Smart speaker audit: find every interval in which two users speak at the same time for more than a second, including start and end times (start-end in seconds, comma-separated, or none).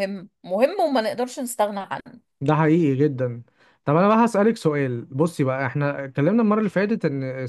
none